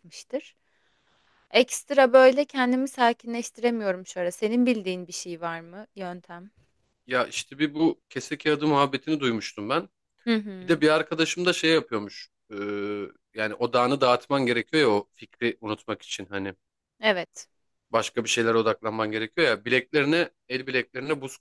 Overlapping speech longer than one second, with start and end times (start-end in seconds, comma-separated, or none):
none